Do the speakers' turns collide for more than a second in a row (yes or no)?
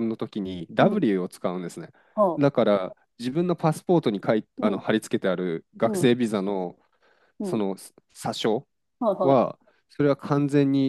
no